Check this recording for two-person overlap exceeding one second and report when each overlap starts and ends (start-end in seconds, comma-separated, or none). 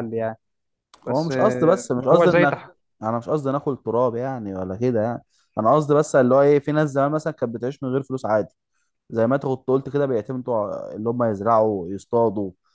1.0-2.5